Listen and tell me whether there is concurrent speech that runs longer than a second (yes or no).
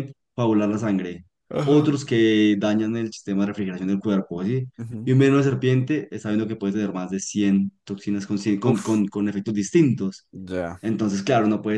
no